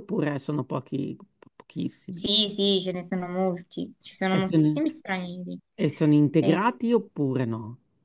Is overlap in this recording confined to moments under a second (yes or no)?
yes